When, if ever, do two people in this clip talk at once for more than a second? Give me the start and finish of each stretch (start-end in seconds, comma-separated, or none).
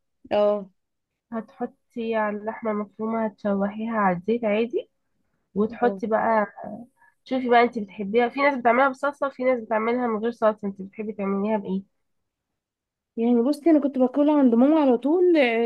none